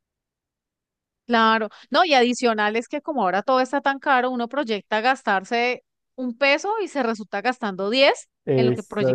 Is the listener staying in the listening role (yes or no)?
no